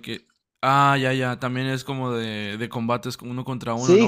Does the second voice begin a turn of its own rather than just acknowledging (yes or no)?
yes